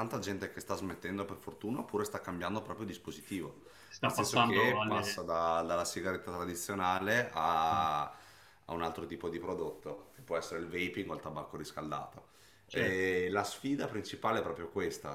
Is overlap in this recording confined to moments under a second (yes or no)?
no